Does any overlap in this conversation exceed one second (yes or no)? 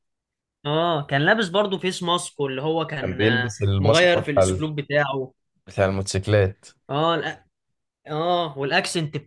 yes